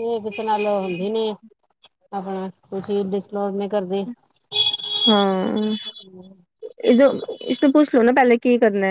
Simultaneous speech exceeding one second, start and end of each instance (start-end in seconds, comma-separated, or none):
none